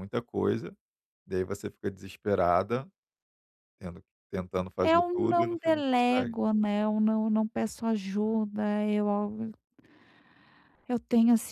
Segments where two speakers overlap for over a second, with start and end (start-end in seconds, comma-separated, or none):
4.8-6.4